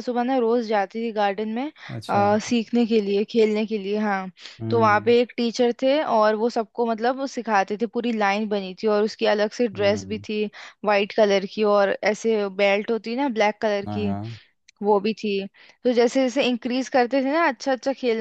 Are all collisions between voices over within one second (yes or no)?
yes